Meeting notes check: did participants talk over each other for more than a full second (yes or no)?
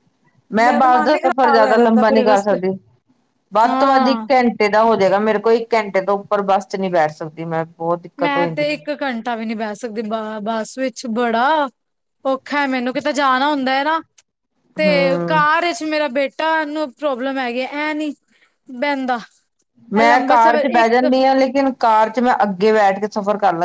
yes